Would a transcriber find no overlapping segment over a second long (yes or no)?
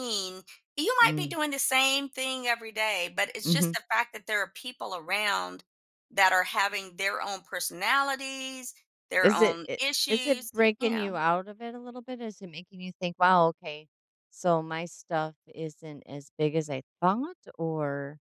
no